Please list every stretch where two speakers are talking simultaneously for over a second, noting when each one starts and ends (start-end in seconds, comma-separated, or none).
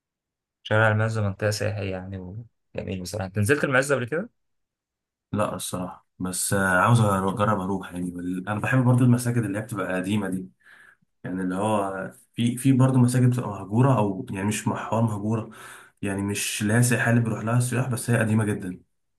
none